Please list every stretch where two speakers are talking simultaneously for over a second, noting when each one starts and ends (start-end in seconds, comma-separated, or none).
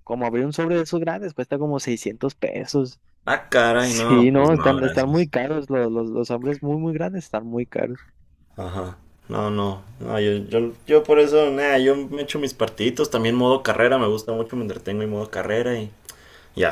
3.8-5.3